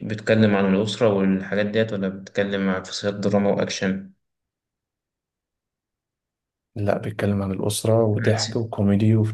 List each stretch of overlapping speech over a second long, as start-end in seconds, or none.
none